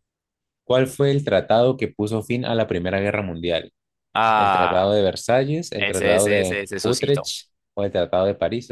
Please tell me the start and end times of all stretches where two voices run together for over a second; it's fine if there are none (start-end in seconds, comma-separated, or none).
5.8-7.3